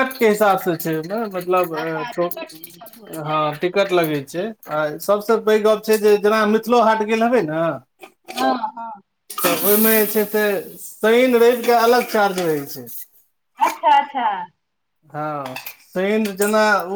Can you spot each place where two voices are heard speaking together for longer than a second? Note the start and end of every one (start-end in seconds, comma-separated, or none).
1.8-3.4